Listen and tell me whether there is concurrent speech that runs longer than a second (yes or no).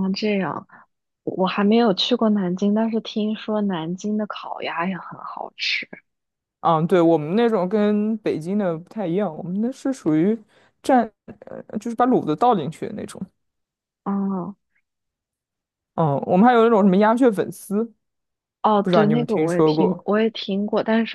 yes